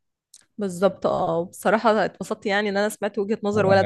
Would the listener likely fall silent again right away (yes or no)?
no